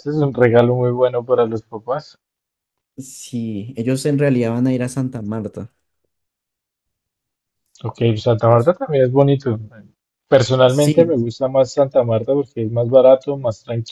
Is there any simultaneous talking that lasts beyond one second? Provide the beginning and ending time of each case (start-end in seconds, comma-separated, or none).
none